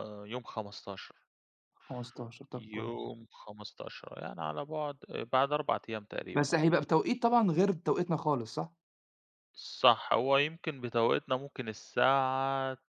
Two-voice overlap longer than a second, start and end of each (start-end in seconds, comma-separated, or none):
none